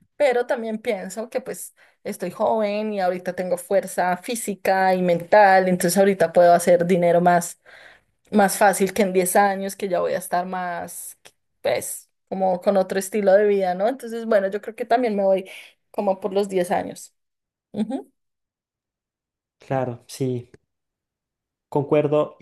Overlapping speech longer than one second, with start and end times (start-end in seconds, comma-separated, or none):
none